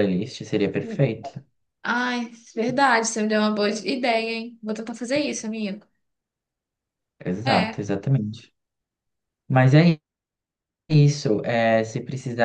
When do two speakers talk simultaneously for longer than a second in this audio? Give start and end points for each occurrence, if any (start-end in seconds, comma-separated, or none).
none